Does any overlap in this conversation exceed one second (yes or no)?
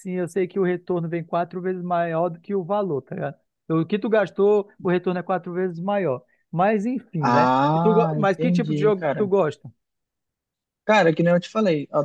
yes